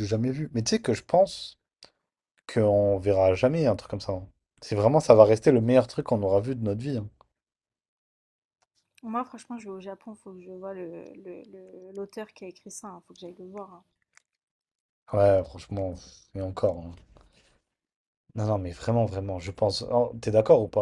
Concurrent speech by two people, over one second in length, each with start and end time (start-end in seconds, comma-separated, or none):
none